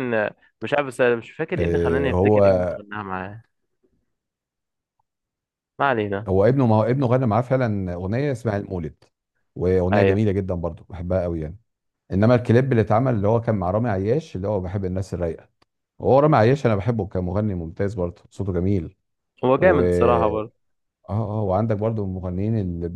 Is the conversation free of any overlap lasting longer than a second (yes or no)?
no